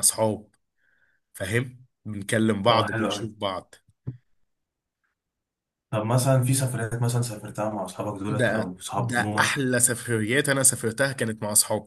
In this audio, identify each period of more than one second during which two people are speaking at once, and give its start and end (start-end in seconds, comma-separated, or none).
8.3-9.6